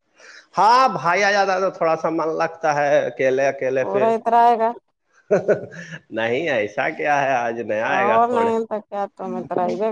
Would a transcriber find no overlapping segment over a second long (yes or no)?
yes